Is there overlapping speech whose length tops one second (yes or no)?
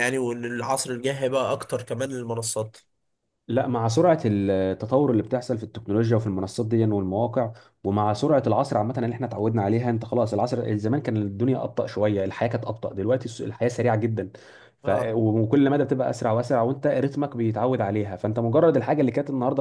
no